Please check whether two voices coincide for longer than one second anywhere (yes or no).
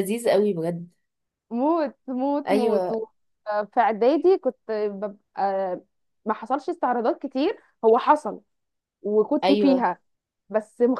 no